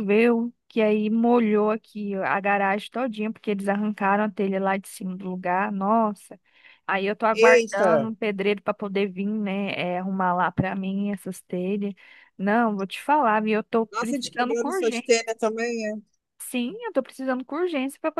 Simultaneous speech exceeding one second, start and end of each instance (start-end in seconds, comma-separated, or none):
13.9-15.1